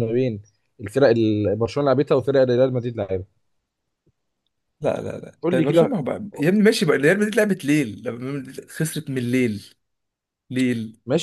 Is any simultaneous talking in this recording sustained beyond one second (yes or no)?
no